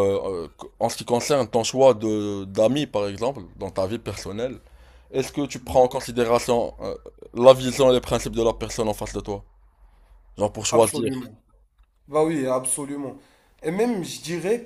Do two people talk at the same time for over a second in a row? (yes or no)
no